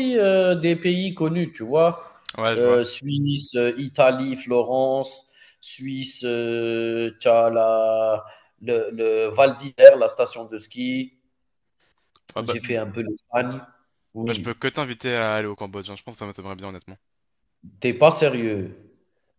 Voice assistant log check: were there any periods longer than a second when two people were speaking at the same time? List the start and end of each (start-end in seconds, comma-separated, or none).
none